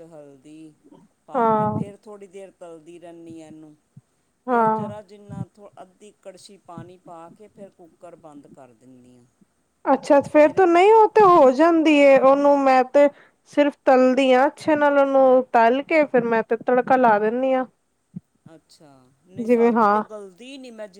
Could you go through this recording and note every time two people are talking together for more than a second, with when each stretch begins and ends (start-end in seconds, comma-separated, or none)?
none